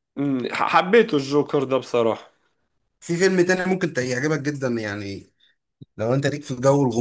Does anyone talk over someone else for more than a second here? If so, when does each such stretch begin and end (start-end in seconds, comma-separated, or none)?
none